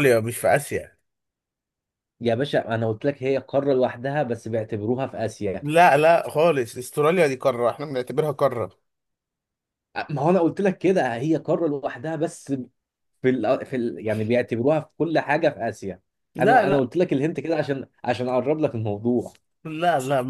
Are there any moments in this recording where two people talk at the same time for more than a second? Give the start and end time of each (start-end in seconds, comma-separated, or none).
none